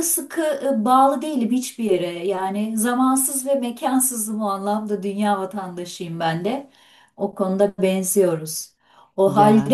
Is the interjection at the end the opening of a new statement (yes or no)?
no